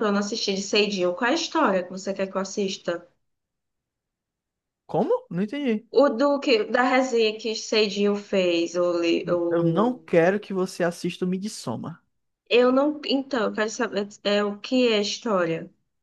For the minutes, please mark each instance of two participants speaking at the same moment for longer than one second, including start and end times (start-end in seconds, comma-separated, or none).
none